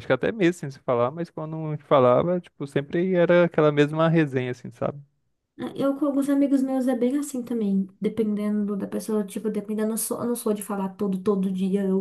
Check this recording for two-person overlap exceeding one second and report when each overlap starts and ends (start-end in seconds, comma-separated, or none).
none